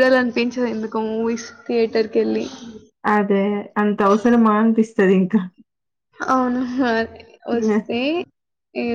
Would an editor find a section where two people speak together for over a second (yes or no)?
no